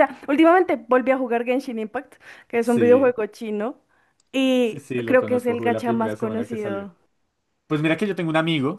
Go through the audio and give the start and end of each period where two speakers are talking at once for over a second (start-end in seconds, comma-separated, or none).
4.6-6.9